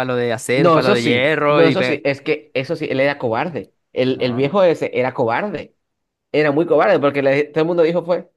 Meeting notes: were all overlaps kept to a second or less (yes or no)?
no